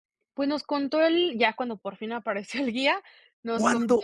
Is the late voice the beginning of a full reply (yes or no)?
yes